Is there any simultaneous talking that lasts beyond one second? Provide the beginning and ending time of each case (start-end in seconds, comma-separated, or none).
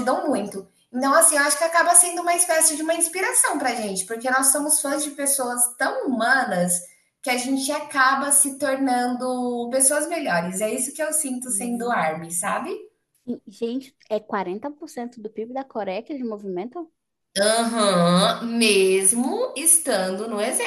none